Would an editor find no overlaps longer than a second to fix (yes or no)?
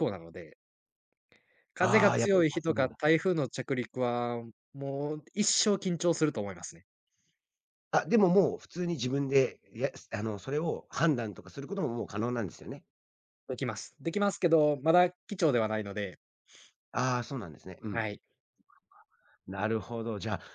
no